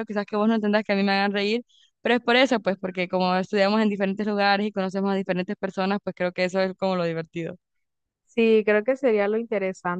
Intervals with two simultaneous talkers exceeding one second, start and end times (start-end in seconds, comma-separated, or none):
none